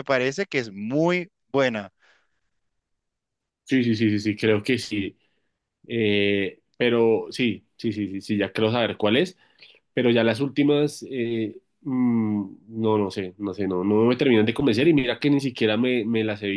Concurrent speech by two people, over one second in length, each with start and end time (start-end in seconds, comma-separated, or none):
none